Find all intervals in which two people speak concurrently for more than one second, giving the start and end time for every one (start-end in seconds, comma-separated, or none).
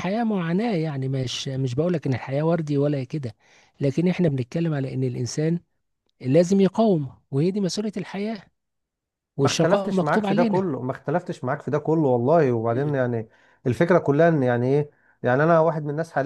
9.4-10.7